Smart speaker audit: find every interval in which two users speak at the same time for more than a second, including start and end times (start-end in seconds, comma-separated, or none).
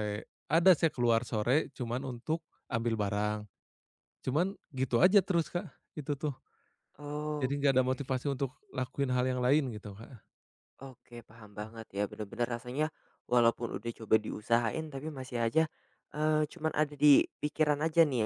none